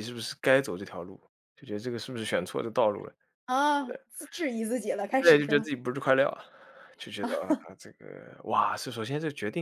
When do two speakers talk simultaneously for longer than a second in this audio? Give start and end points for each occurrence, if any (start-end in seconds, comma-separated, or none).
none